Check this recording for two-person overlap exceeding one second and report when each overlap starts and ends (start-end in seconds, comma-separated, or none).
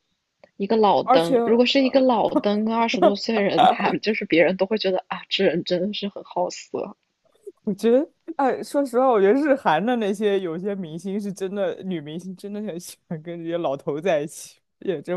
none